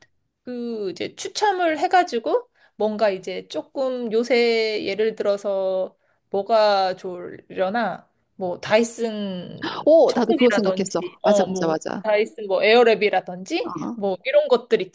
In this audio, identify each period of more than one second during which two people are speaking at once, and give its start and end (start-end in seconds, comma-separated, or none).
9.8-12.0